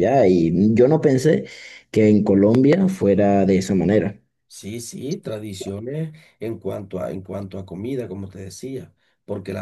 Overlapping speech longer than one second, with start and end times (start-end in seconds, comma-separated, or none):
none